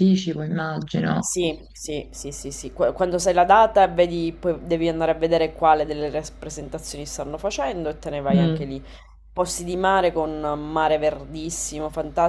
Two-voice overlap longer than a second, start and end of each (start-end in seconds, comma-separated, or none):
none